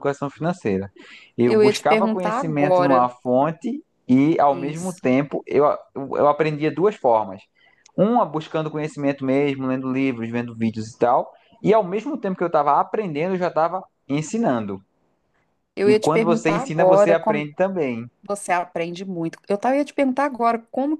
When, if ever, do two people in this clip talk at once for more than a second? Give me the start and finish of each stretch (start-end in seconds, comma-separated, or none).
1.4-3.1, 15.8-17.5